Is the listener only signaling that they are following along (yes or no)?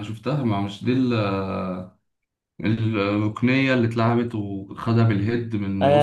no